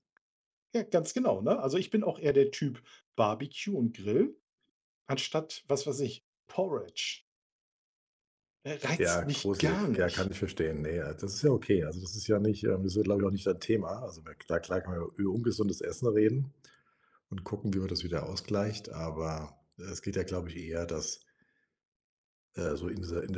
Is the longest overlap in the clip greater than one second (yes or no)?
yes